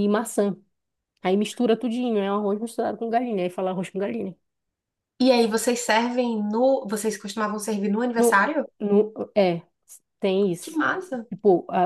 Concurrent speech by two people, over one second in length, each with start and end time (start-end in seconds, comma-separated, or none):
none